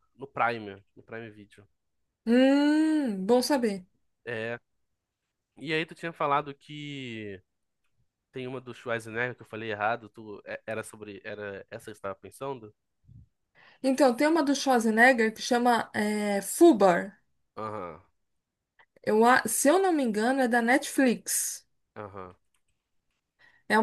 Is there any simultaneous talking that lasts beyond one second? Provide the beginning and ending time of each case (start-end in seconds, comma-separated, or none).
none